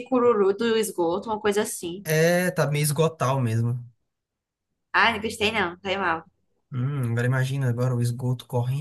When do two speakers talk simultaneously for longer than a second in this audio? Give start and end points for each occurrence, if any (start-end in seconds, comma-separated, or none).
none